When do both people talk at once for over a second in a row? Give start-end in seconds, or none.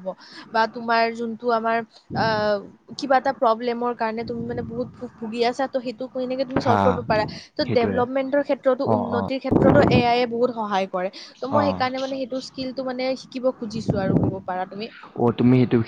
none